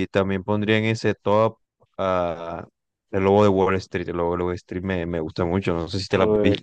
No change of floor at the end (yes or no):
no